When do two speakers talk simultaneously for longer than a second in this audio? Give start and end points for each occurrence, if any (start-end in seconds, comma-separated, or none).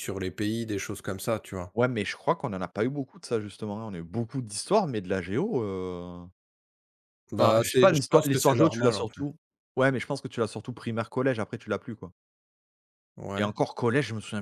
7.4-9.2